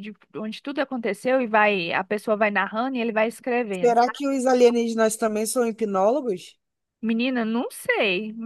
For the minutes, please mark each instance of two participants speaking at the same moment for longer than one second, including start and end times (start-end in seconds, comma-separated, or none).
none